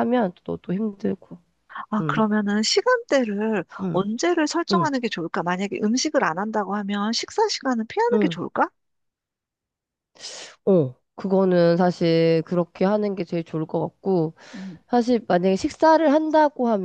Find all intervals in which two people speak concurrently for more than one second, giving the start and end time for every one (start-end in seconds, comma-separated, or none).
none